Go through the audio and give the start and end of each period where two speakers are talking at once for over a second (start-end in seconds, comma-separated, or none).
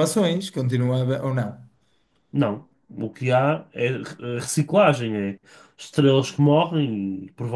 none